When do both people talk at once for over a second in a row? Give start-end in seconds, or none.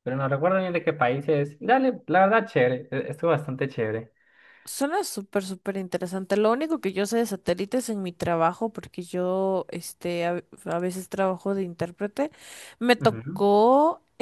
none